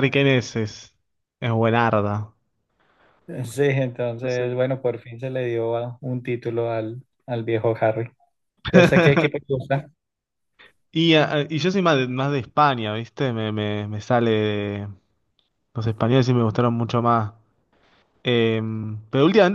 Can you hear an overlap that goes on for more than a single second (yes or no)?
no